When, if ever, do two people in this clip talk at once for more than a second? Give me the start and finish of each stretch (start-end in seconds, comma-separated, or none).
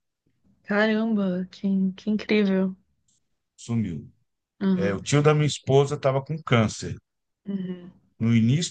none